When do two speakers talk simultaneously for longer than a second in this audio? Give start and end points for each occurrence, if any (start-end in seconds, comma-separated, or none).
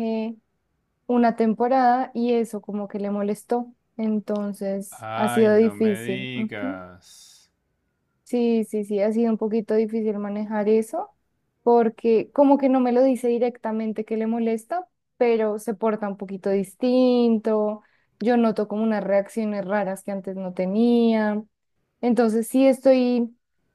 4.9-6.8